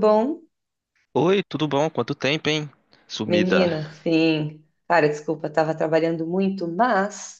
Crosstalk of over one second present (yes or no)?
no